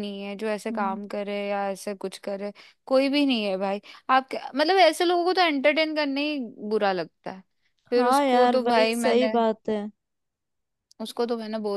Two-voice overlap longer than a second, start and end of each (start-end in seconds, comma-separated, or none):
8.0-9.3